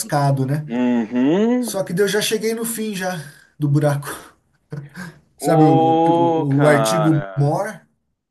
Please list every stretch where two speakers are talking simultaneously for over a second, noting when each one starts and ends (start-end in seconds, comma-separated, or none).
5.4-7.4